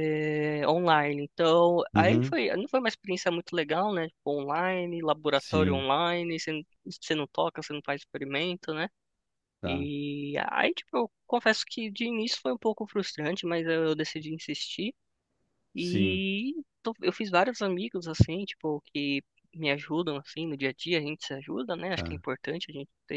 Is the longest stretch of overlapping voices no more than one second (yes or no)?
yes